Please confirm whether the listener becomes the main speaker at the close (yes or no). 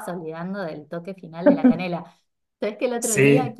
no